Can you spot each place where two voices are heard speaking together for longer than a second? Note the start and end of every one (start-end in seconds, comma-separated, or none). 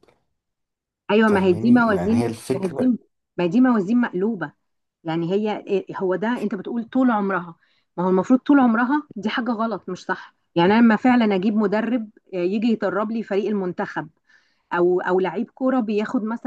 1.3-2.9